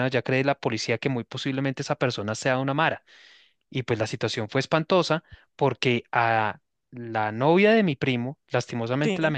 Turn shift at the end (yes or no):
no